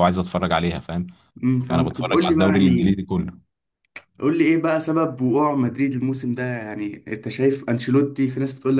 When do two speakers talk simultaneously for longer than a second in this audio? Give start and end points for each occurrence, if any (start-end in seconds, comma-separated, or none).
1.7-3.0